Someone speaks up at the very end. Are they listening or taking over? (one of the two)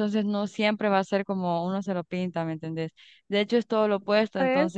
listening